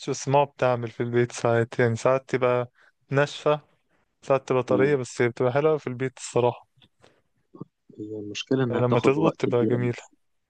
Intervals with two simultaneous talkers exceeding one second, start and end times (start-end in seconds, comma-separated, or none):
8.7-9.9